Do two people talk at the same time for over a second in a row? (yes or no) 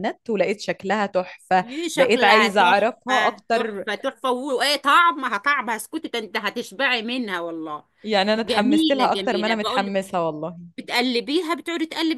yes